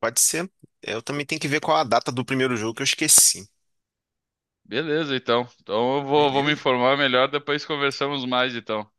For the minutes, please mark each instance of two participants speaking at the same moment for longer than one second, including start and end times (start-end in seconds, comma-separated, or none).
none